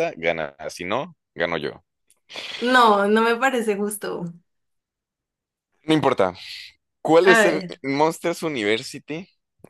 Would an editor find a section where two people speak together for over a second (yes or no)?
no